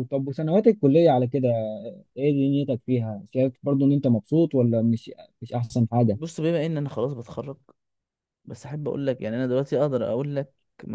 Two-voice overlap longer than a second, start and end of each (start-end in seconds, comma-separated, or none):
none